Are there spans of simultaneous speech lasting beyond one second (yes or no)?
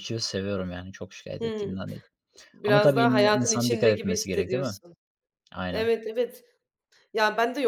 yes